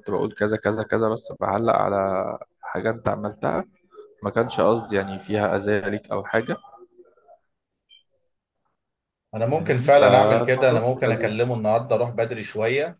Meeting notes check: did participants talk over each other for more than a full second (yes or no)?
yes